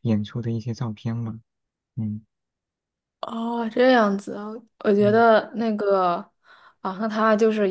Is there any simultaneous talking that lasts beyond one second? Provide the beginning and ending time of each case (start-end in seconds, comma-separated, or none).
none